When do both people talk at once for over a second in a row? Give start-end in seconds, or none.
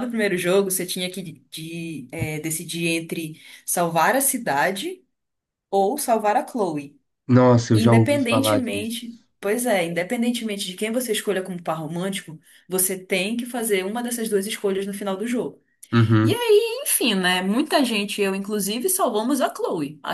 7.7-8.9